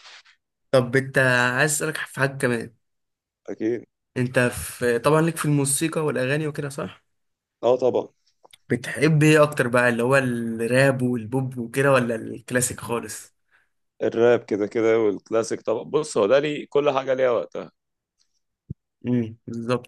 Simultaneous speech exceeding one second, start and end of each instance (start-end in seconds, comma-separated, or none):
none